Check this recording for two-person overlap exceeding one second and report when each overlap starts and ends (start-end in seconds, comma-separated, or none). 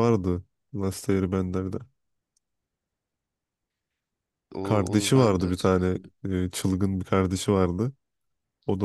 4.6-6.1